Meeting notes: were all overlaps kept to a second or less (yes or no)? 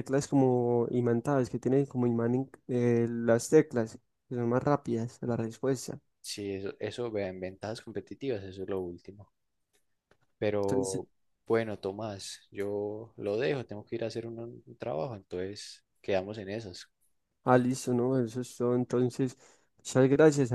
yes